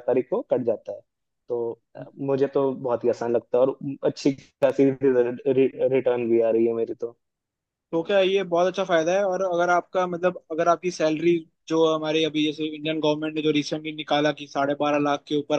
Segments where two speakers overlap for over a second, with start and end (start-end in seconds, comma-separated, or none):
none